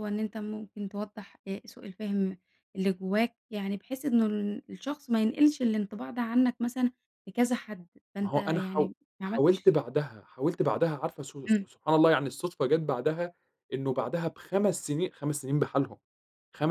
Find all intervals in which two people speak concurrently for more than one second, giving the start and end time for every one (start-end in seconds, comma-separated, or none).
8.2-9.7